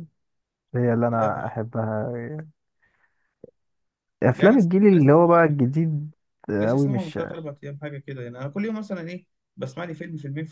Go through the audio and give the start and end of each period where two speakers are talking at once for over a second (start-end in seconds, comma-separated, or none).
4.3-5.6